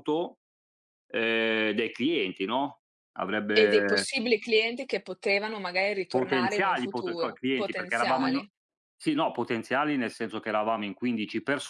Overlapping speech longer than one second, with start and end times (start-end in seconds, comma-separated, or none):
6.1-8.4